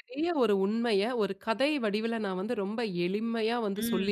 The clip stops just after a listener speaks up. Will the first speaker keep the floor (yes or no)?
yes